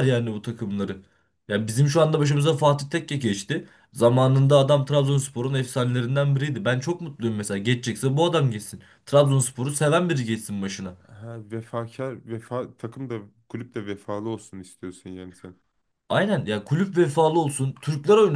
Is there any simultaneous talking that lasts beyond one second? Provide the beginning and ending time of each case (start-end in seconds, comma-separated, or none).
none